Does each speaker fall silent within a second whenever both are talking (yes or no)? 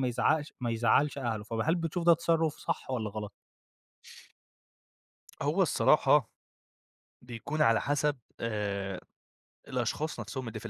yes